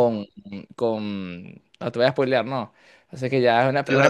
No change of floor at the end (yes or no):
yes